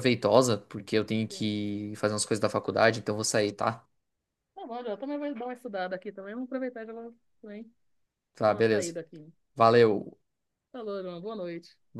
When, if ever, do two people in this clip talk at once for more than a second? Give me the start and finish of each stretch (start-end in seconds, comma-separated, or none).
none